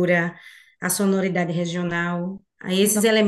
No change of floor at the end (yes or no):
yes